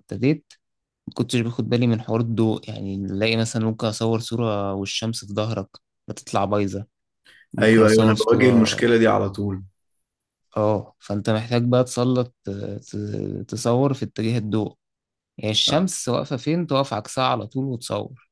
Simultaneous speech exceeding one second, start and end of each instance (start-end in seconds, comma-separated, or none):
7.6-8.9